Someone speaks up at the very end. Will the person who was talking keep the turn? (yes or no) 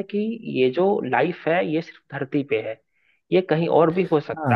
no